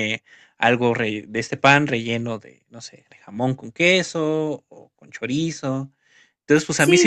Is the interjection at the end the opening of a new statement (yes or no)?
yes